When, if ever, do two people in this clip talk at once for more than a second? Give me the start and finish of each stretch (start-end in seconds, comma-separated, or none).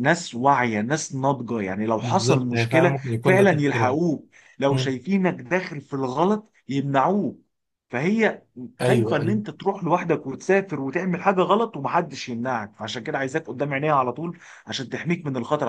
2.0-4.0